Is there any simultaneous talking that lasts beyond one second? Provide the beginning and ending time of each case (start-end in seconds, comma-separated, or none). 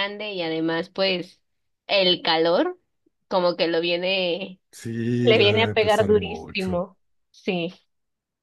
5.3-6.8